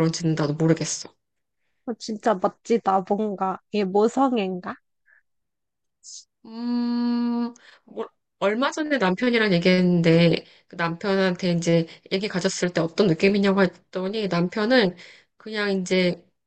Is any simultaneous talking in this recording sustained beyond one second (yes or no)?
no